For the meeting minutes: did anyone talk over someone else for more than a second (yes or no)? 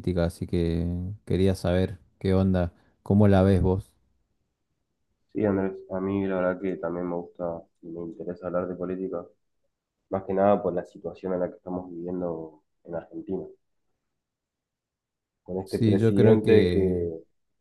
yes